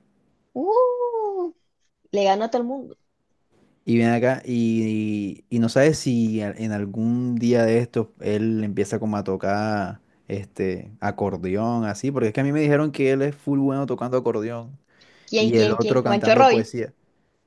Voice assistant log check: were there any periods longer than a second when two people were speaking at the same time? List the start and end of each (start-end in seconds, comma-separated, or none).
15.3-16.6